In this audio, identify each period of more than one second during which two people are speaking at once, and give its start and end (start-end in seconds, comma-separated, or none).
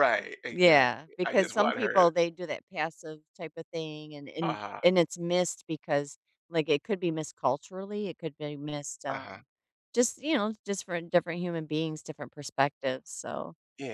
0.5-2.1